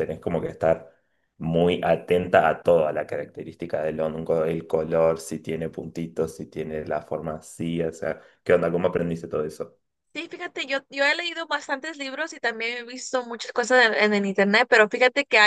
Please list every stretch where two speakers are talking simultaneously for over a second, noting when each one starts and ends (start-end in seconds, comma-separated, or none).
none